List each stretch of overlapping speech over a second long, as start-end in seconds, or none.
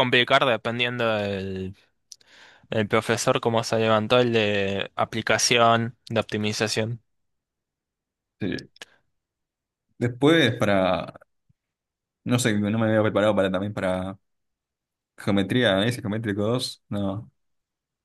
none